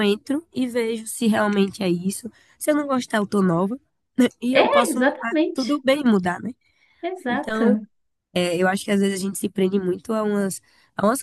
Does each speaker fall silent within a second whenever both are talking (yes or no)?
no